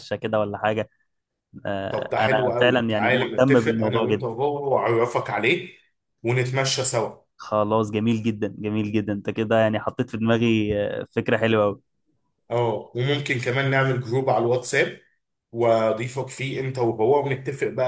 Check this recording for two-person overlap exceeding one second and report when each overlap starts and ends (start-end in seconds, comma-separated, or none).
1.9-4.3